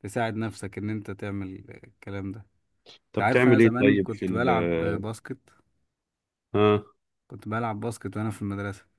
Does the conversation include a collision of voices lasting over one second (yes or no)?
yes